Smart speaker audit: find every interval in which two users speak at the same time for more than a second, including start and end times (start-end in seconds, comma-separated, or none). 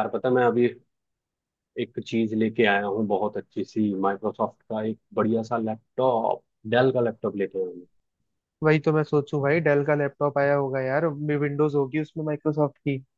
none